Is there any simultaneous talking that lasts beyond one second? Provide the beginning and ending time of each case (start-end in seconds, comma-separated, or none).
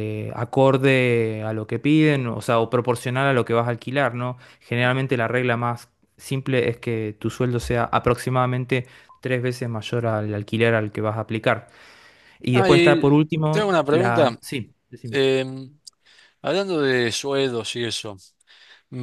12.5-14.4